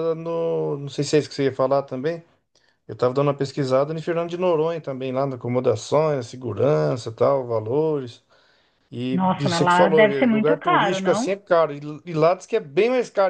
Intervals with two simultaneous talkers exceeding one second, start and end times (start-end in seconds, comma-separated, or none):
9.1-11.4